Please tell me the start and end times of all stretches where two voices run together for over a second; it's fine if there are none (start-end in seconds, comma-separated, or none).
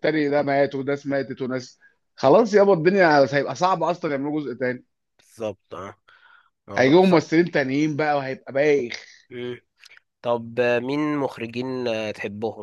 none